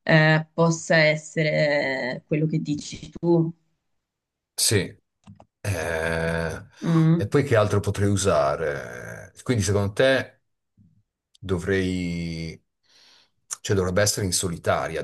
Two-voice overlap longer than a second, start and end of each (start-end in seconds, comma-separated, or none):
none